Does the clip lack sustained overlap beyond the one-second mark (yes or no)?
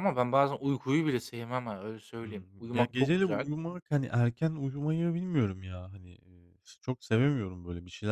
no